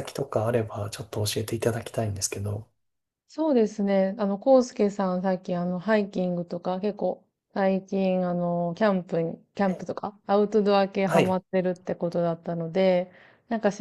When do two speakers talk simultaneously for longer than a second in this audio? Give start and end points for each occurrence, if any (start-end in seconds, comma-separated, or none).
none